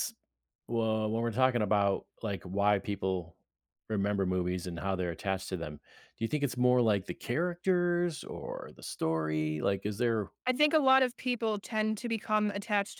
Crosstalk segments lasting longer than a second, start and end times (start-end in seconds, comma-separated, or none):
none